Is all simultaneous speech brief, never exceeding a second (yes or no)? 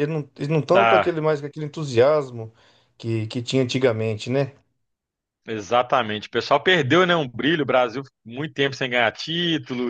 yes